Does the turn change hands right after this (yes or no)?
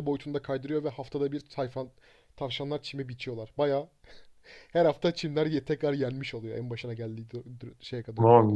yes